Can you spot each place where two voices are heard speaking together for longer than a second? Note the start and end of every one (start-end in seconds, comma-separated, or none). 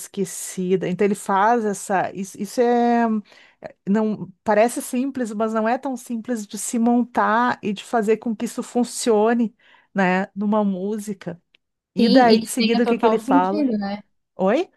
12.0-13.7